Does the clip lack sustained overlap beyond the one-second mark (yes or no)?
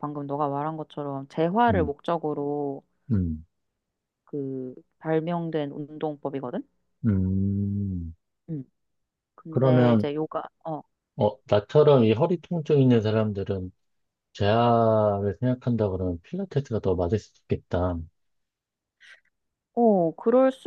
yes